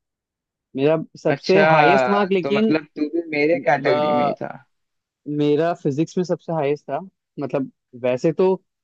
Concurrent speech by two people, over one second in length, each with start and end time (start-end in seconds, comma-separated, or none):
1.3-2.8